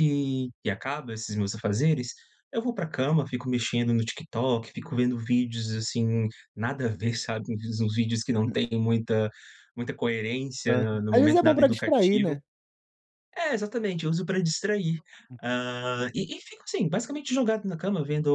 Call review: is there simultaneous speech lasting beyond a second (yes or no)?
yes